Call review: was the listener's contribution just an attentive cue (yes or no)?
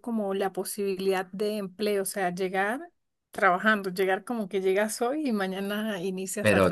no